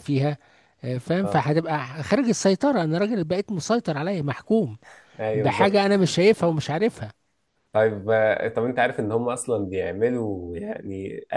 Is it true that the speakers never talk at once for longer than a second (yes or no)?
yes